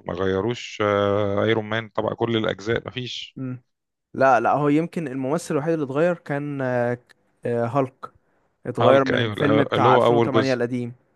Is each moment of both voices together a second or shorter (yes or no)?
no